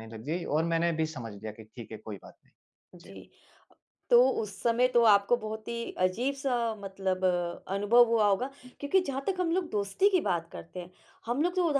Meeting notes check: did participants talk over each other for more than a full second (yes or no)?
no